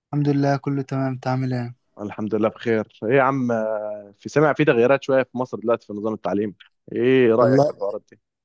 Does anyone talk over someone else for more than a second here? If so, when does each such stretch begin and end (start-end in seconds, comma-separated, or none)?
none